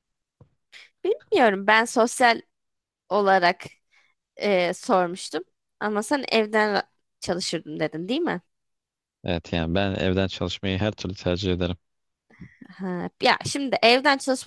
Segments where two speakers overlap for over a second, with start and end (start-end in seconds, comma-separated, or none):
none